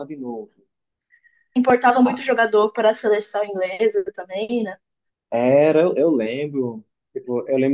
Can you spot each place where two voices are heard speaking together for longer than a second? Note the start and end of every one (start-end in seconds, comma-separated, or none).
none